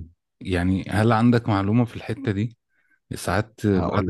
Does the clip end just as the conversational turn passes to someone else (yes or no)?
no